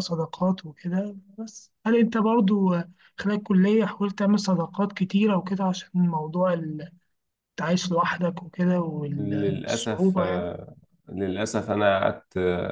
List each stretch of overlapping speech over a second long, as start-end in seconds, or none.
9.2-10.5